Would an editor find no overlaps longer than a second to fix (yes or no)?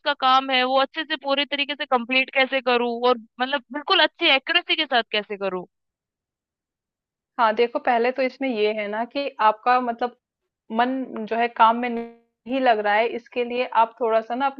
yes